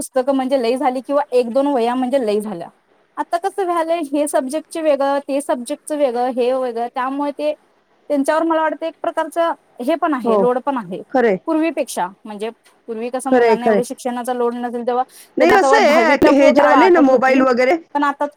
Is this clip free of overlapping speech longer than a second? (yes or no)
no